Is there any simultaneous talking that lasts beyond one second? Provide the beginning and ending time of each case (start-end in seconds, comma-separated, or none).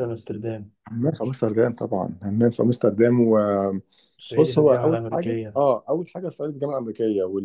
4.2-5.6